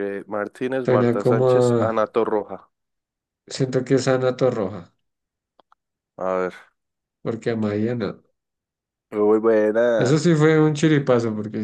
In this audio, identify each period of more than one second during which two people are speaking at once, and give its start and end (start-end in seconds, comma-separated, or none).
0.8-2.0